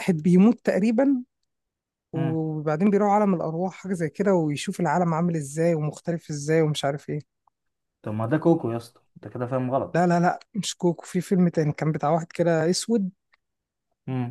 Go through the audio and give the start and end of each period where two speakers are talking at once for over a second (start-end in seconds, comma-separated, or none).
none